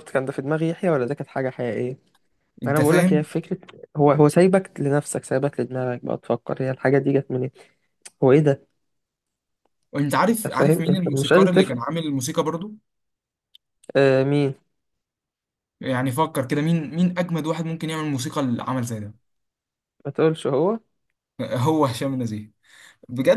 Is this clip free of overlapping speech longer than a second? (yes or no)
no